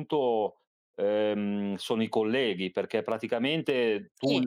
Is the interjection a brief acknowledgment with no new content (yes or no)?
yes